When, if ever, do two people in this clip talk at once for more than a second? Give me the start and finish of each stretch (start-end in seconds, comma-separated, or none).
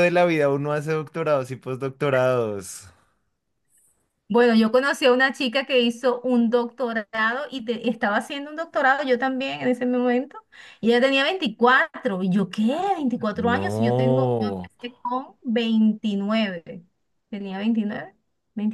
13.3-14.7